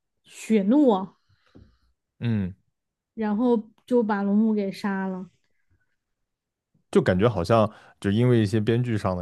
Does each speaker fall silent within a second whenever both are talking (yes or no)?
yes